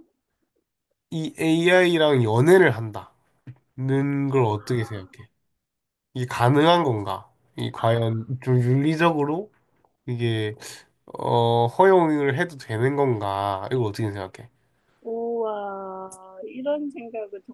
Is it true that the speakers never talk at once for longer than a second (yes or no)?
yes